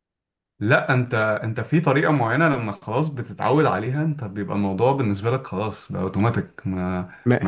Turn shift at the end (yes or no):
no